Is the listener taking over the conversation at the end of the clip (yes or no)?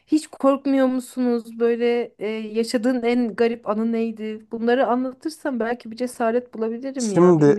yes